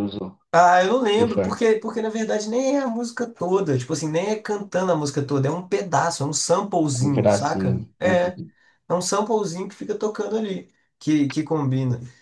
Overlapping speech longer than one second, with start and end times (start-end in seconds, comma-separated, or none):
7.0-8.4